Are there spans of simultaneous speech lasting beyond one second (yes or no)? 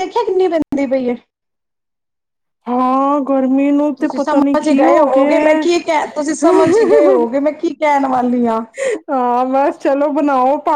yes